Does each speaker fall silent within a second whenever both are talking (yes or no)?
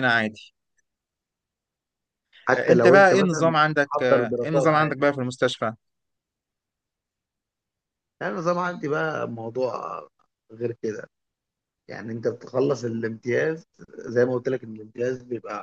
no